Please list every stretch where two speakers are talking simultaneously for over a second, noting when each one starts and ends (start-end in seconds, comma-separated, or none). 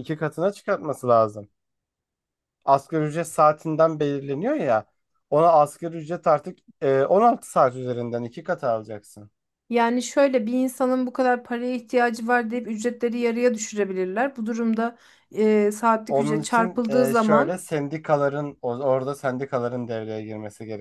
16.1-17.6